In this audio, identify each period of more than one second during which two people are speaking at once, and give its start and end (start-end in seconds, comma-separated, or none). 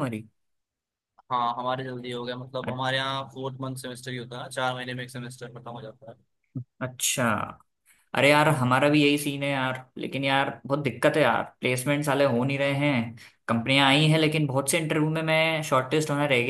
none